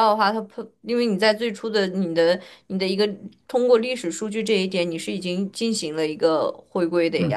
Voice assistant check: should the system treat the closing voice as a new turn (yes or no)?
yes